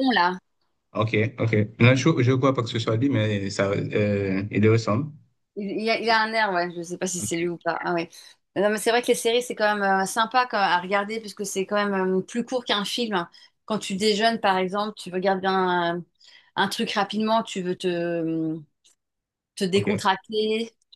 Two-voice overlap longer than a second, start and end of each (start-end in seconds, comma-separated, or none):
none